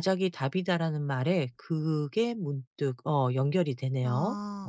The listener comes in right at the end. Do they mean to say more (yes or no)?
yes